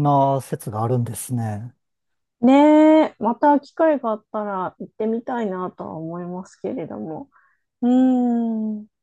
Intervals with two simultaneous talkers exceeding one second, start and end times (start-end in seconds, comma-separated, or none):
none